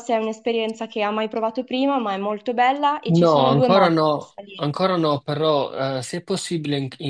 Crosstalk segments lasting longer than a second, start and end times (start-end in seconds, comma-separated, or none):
3.0-4.7